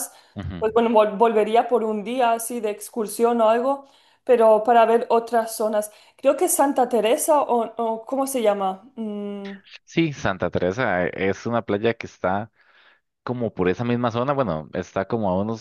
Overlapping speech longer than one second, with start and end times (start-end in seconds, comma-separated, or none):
none